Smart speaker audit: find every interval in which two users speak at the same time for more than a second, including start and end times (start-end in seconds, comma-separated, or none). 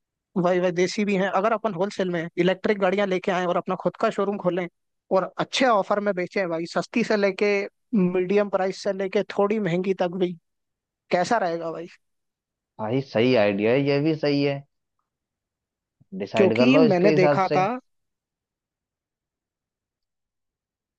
16.4-17.6